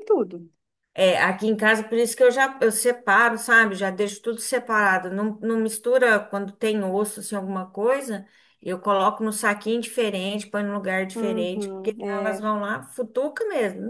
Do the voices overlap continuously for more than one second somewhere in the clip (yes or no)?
yes